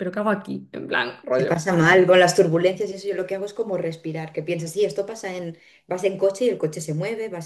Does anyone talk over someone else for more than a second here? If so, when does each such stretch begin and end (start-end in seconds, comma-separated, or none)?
none